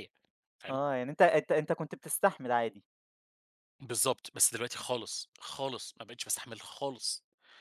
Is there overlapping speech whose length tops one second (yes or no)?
no